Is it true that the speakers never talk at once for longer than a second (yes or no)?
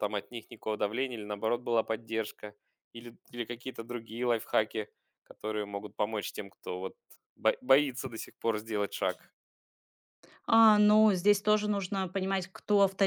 yes